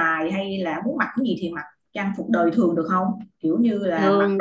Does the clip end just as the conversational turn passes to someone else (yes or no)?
no